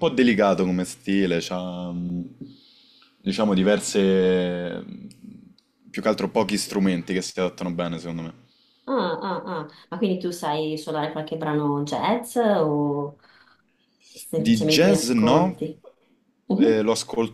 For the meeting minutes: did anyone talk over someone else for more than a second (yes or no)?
yes